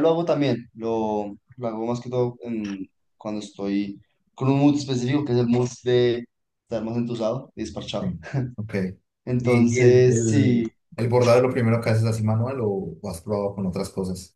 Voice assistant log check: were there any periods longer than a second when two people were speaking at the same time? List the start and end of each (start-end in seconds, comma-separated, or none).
9.4-10.7